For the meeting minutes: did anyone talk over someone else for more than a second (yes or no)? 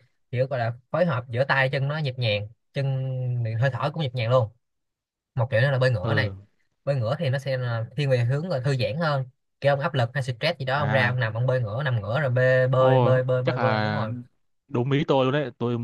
yes